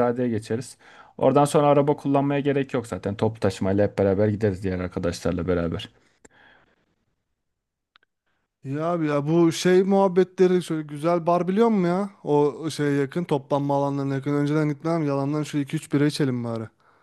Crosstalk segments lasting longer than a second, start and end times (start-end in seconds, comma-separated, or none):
none